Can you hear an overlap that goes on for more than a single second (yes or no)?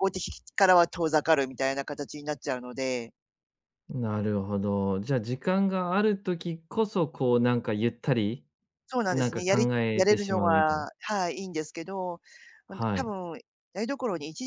yes